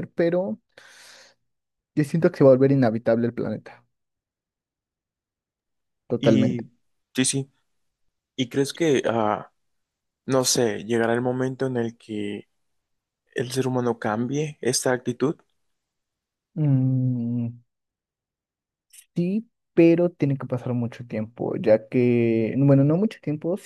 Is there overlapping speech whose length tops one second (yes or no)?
no